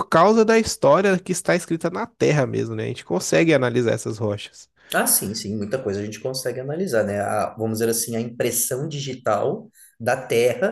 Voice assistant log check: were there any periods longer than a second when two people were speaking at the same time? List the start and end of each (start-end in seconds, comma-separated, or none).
none